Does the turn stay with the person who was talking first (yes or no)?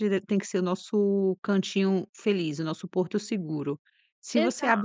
yes